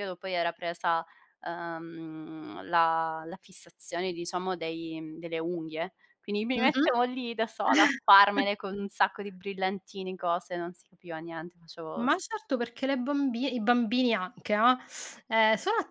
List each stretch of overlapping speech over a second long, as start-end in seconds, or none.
none